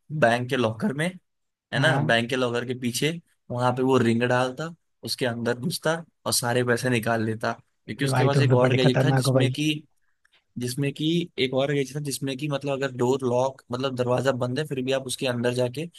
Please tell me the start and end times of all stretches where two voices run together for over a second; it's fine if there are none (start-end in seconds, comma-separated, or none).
7.9-9.5